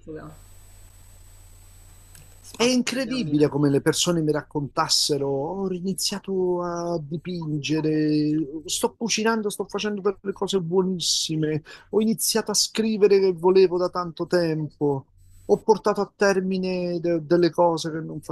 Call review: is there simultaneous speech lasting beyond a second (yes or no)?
yes